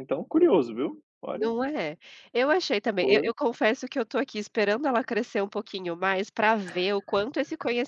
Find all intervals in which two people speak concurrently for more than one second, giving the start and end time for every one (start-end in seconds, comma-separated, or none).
none